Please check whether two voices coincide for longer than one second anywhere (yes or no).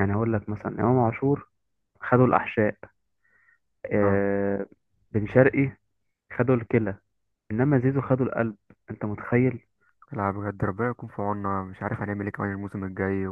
no